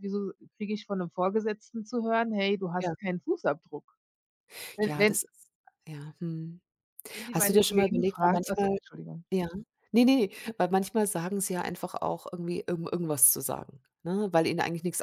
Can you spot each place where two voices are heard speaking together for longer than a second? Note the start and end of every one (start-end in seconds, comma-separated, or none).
7.3-8.8